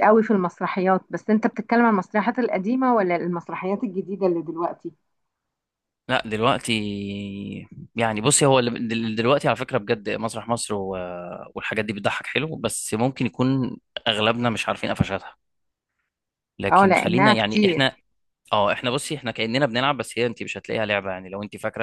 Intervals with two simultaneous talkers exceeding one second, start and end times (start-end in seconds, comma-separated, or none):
16.7-17.9